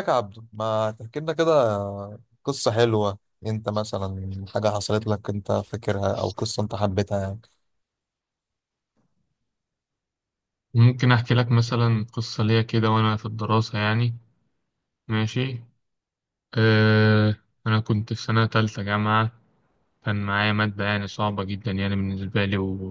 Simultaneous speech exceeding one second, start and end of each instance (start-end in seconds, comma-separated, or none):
none